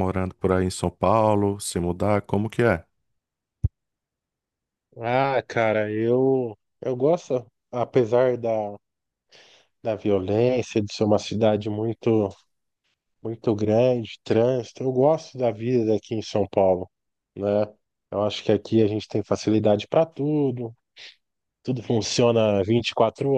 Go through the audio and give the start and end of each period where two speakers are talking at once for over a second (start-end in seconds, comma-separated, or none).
none